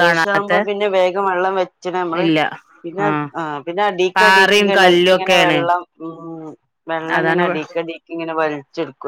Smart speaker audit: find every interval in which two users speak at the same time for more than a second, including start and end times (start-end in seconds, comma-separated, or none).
4.2-5.6